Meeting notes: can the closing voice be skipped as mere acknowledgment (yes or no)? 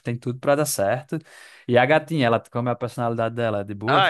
no